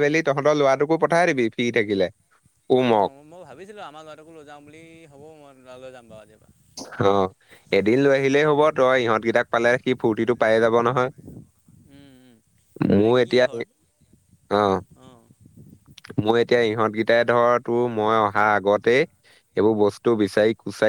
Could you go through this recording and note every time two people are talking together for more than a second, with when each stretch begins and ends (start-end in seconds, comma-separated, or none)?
none